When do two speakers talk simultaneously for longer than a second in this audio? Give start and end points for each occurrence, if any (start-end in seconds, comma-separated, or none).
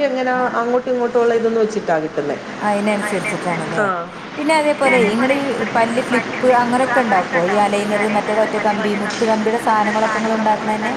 none